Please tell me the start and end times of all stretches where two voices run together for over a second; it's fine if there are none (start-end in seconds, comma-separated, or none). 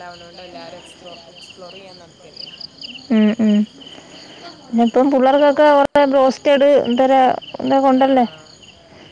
none